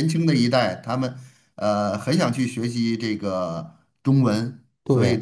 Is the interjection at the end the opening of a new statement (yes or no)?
no